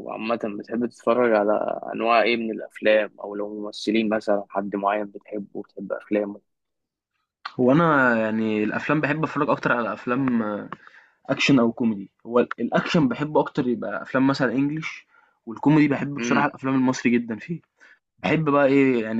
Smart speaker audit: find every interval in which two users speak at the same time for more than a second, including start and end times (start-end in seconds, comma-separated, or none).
none